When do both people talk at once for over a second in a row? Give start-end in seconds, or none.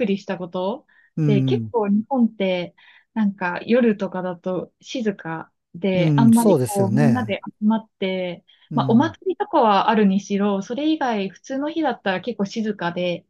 5.9-7.4